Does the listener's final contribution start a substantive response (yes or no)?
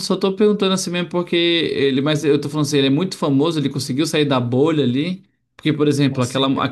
no